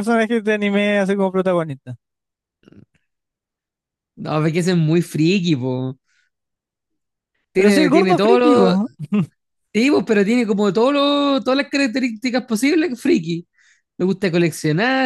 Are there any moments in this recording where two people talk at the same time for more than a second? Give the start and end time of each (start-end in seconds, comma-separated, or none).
7.6-8.8